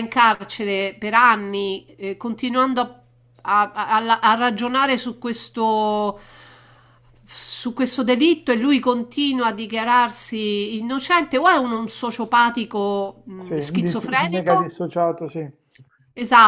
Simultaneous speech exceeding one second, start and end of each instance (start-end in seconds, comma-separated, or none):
13.3-14.7